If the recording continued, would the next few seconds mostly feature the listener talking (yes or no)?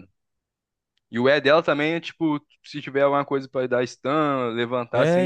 yes